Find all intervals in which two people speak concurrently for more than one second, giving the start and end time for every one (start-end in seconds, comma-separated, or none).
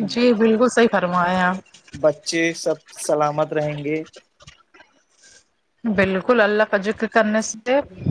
none